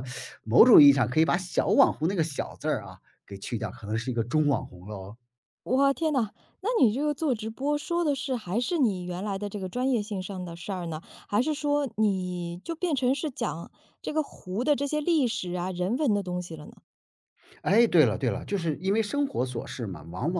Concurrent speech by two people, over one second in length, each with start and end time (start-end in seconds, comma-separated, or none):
none